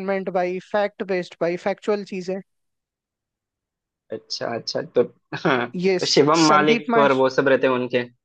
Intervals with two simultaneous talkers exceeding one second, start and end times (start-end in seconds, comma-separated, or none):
5.8-7.3